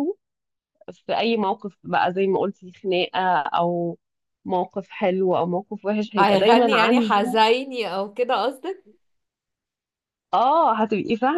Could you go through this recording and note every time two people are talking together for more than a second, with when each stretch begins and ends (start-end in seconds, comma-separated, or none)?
6.2-7.4